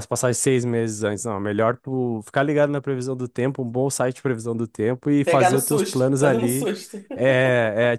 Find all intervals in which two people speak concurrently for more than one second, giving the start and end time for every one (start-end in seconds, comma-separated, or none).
5.2-6.7